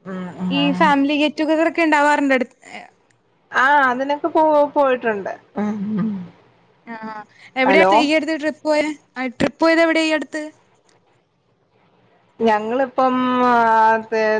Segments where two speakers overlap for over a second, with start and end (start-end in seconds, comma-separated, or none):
none